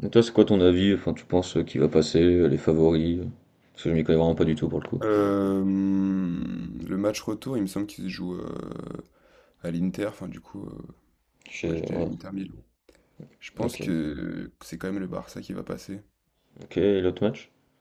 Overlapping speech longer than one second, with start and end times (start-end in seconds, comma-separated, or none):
none